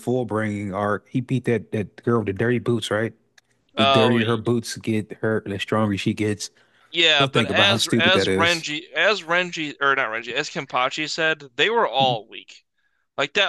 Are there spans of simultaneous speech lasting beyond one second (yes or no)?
yes